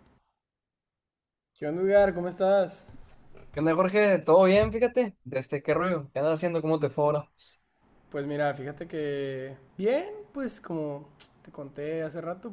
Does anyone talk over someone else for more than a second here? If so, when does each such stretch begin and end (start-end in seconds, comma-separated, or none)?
none